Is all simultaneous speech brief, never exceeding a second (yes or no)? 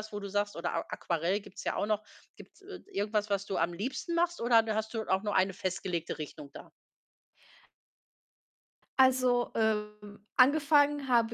yes